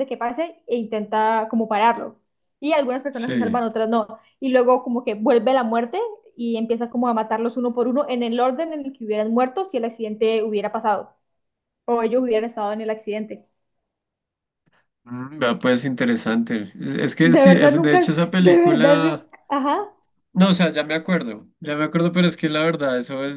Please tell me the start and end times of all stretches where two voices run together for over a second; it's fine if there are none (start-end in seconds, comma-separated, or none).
17.2-19.3